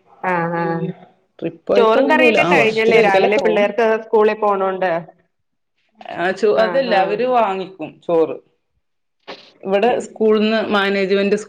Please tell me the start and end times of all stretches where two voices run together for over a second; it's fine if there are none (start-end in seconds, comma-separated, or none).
1.8-3.6